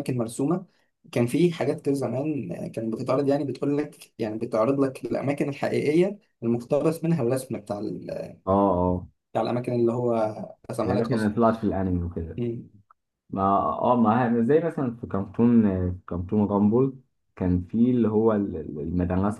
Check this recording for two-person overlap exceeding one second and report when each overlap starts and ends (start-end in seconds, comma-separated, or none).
none